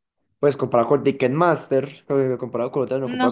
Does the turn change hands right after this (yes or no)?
no